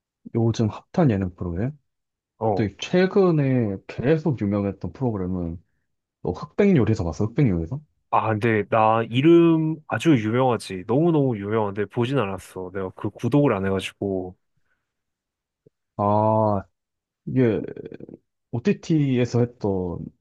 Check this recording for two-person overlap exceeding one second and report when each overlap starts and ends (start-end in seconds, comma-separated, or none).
none